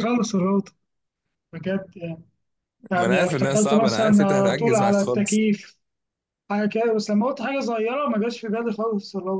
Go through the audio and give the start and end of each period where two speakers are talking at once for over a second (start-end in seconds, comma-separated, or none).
2.9-5.4